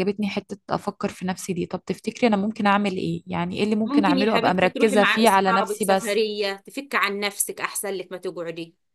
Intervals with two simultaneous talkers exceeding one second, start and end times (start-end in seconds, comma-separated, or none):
3.9-6.2